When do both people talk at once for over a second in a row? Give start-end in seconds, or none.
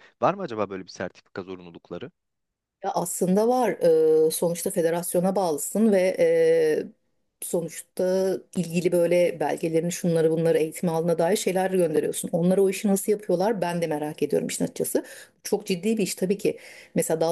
none